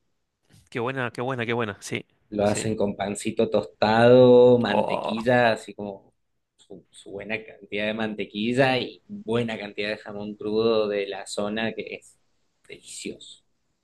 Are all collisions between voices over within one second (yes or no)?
yes